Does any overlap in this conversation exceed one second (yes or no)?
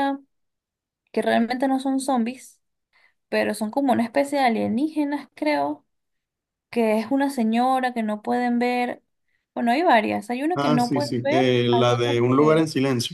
yes